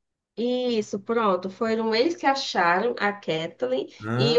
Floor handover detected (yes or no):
no